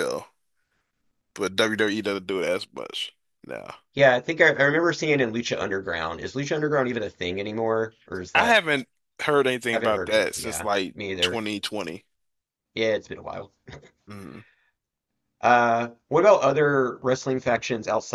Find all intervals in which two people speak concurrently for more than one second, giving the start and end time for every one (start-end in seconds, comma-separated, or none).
9.7-11.4